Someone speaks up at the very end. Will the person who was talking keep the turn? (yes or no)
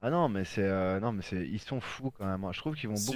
no